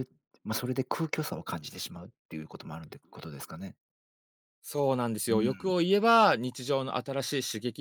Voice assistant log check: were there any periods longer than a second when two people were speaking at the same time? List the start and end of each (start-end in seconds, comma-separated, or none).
none